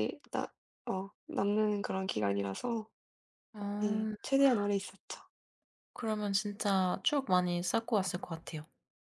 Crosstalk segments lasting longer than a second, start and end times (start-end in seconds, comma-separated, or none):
none